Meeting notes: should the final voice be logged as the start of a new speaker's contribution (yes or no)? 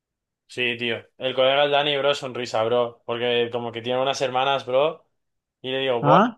no